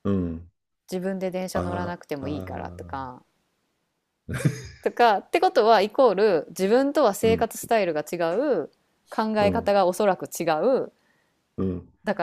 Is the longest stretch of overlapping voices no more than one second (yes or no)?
no